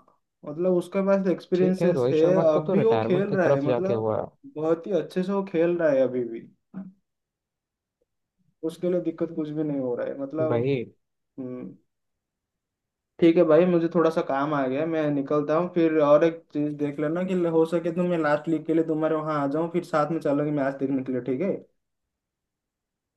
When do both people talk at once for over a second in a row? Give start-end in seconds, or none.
1.5-4.1